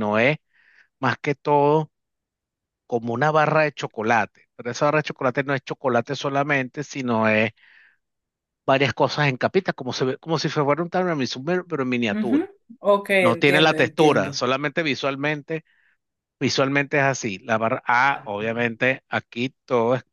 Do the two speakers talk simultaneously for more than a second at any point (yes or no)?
yes